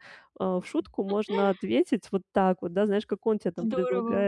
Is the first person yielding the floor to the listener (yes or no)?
no